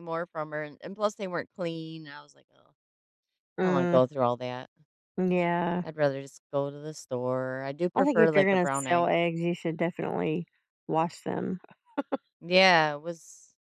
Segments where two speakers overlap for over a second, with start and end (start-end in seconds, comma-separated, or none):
7.9-9.2